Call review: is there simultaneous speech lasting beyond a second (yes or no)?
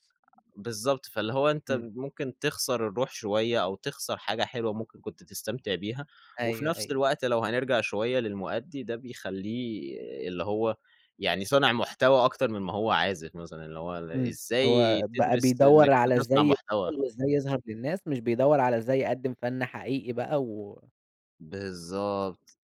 yes